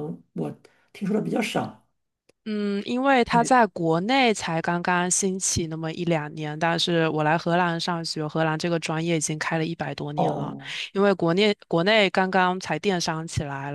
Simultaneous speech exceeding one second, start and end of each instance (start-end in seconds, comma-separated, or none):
none